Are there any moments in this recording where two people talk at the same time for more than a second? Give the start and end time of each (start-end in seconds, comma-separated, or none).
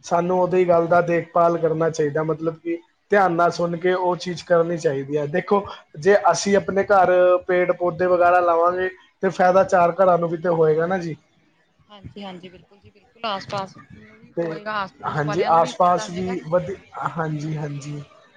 none